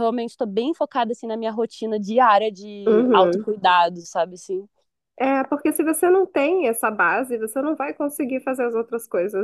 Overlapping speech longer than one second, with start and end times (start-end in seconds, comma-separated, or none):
none